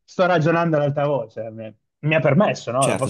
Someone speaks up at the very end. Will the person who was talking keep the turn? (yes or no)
no